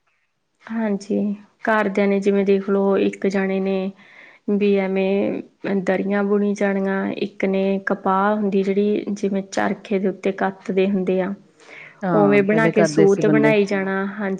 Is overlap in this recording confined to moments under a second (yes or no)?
no